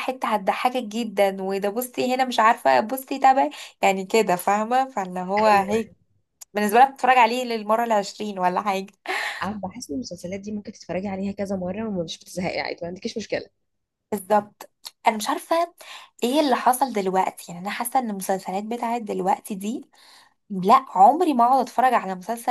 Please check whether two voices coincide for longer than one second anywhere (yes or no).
no